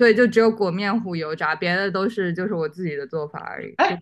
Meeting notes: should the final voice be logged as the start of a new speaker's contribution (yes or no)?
yes